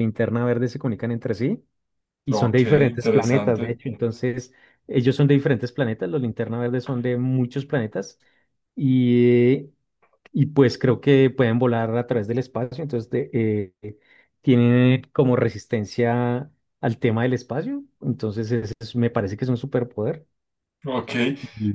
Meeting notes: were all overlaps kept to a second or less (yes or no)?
no